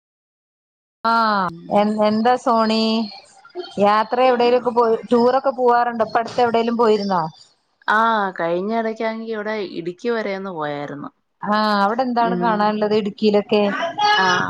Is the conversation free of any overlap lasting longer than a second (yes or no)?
yes